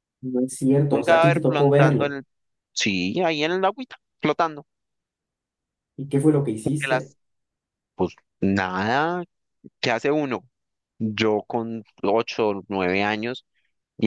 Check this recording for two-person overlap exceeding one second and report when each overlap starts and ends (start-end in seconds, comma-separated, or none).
0.9-2.2